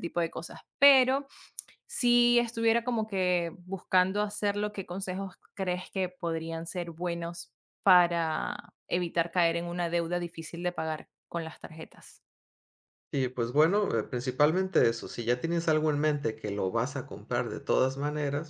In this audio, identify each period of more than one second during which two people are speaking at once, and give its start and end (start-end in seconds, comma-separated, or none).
none